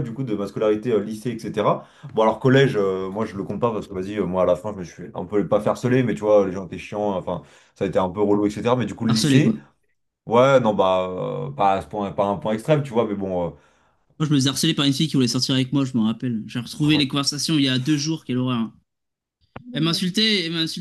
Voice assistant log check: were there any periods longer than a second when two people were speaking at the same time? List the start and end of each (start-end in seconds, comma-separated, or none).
none